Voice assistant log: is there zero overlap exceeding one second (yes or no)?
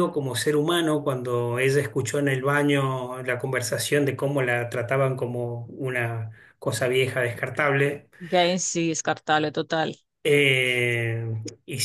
yes